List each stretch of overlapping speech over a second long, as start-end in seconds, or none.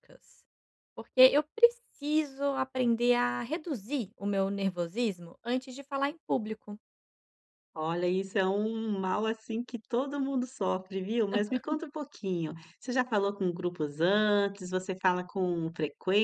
none